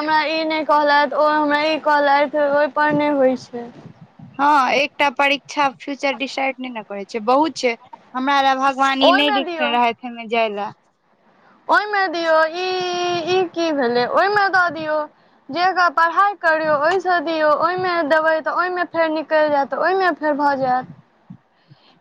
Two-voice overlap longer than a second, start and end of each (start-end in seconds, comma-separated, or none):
none